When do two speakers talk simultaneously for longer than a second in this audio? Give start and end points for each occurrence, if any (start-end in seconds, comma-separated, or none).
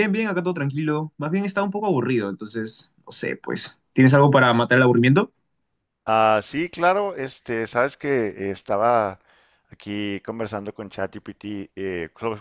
none